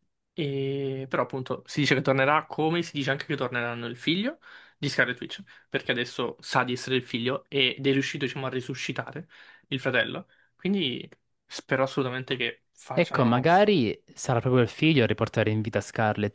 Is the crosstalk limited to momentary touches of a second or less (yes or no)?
yes